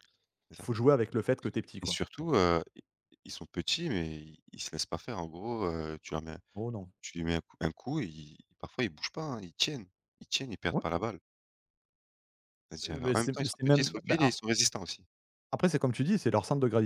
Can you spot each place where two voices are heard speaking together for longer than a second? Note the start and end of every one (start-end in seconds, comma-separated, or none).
13.0-14.3